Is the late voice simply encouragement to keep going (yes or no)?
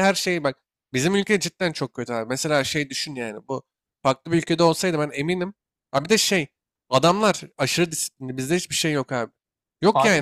no